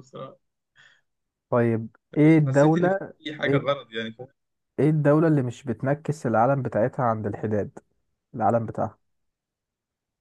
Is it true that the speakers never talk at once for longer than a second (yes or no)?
no